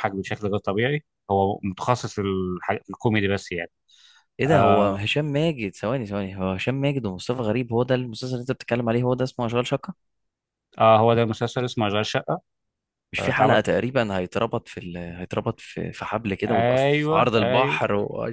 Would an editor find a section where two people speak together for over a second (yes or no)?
yes